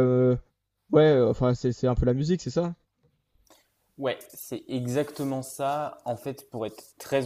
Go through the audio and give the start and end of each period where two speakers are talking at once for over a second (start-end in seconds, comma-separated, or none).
none